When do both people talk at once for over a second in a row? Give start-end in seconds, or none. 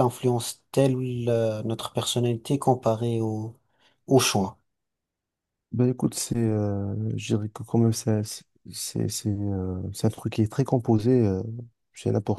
none